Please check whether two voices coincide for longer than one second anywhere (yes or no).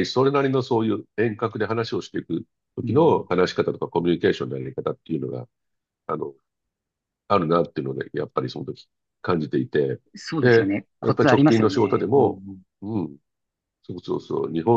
yes